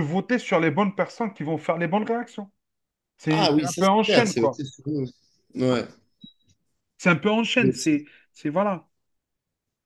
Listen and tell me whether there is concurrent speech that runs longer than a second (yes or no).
yes